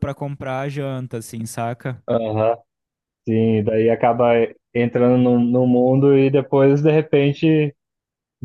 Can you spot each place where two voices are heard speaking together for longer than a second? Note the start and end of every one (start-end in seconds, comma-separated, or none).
none